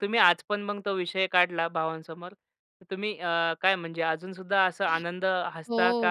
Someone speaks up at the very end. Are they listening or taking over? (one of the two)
taking over